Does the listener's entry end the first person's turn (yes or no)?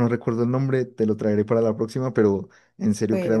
no